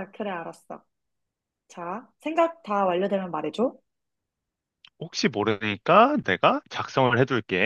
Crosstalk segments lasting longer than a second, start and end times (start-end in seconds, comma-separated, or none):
none